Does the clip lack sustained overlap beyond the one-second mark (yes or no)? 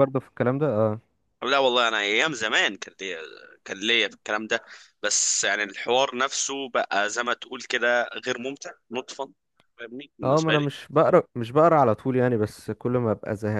yes